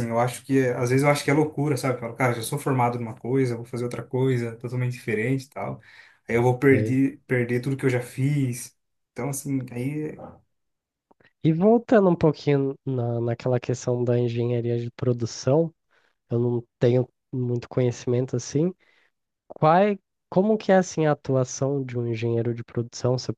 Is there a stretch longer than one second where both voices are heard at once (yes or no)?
no